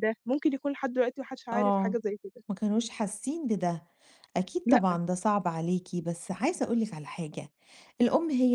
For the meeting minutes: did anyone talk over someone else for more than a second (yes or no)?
no